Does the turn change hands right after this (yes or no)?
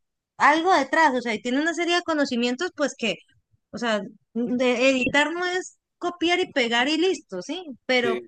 no